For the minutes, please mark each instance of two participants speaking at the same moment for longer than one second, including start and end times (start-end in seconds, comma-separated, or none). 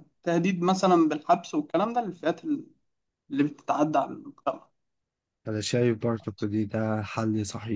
none